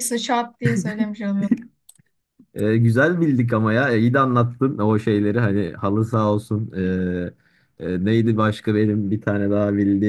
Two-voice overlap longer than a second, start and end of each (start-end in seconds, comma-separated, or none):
none